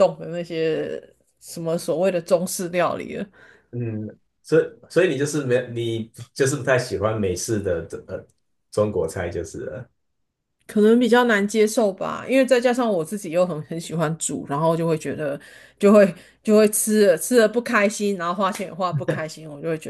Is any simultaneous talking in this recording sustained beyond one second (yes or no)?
no